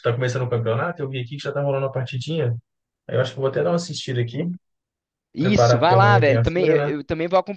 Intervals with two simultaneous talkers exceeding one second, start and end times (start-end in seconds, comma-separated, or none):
5.4-6.9